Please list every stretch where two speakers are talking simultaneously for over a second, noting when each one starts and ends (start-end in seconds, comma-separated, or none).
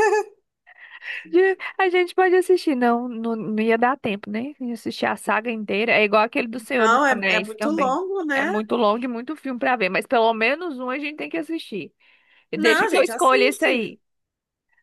6.8-8.5, 12.5-13.9